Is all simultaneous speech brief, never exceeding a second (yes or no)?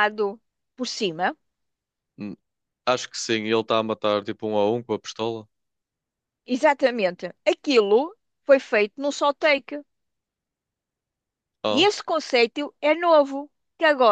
yes